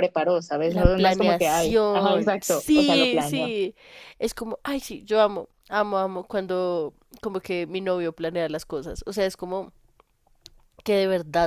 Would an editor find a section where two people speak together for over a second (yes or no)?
yes